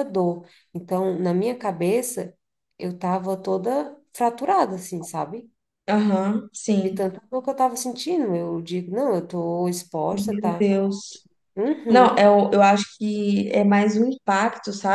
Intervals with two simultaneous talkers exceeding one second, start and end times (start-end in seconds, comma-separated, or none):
none